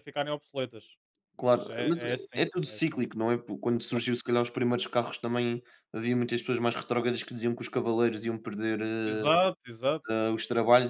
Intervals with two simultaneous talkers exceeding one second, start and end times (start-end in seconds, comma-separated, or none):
1.4-3.1